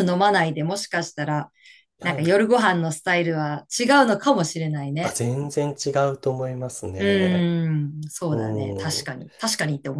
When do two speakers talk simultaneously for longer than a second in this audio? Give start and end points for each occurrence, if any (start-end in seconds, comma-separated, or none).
none